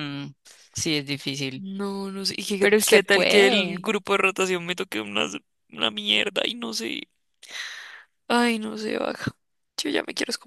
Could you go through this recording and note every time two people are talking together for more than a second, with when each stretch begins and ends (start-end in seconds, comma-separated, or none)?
2.6-3.9